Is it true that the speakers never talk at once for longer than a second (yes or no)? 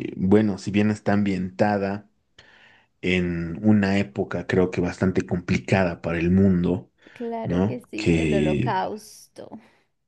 no